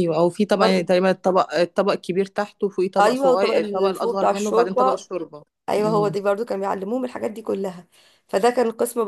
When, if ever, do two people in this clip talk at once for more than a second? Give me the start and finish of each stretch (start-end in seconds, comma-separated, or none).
3.0-5.0